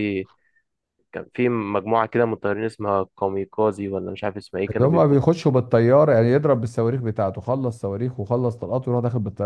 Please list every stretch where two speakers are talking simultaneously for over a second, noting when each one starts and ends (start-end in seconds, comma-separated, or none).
none